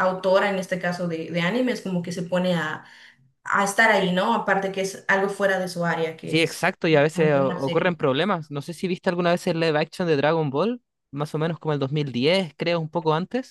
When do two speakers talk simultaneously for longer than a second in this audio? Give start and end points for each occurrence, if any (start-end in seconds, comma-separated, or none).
6.2-8.0